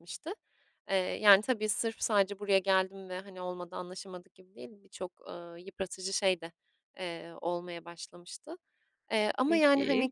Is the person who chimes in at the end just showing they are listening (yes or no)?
yes